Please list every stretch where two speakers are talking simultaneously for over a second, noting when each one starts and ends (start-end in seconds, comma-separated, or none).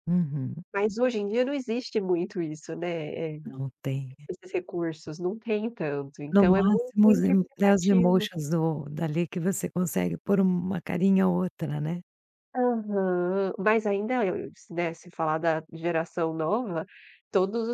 6.3-8.3